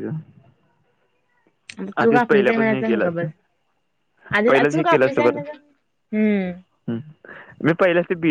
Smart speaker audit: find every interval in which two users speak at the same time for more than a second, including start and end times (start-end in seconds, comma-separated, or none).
2.0-3.3